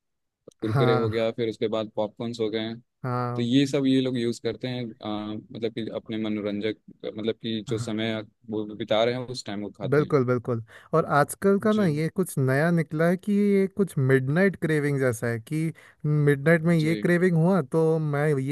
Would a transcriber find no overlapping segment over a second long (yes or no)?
yes